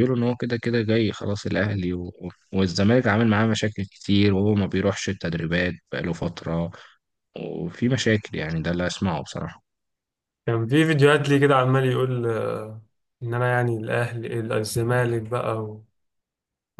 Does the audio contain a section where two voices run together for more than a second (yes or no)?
no